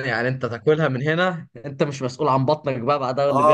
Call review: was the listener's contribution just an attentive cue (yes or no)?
no